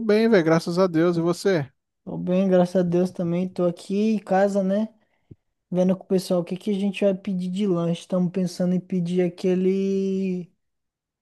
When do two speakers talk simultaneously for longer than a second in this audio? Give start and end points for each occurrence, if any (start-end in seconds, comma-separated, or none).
none